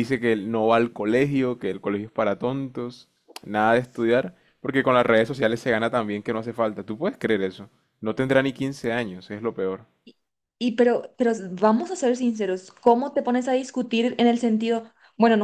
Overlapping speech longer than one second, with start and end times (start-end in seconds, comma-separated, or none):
none